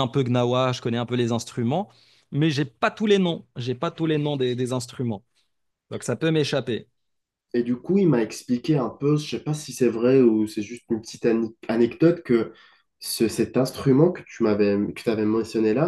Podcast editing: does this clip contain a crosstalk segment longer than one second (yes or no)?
no